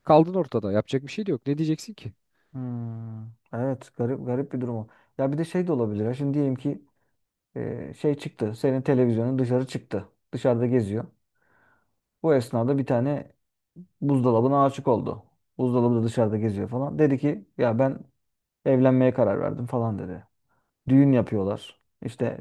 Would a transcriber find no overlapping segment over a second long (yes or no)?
yes